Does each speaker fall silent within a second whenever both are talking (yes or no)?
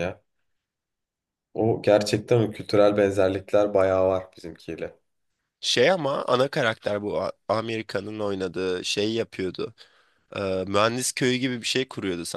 yes